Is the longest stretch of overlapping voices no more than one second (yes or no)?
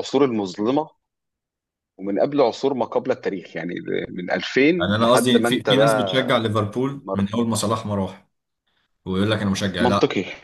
no